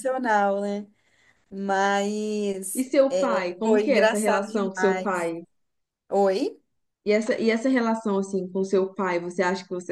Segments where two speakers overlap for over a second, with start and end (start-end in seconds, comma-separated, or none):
3.6-5.3